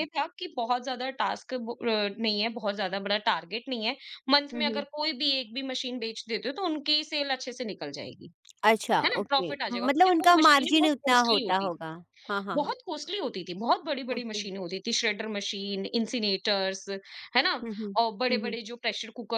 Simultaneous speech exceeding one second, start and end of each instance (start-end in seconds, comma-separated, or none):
9.0-11.7